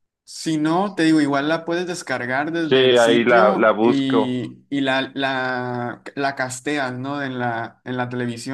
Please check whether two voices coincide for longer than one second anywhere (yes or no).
yes